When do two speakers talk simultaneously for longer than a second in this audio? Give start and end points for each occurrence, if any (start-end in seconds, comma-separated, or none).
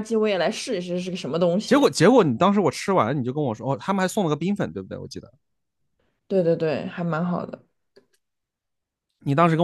none